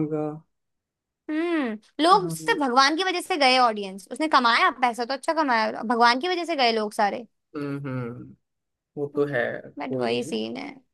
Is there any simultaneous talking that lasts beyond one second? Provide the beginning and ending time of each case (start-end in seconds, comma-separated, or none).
none